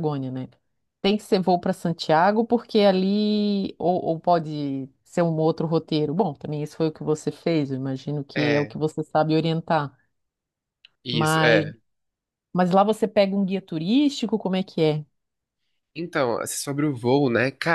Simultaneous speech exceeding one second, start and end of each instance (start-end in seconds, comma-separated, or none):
none